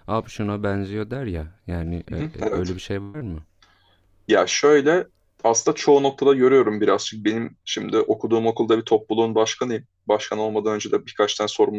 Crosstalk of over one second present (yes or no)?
no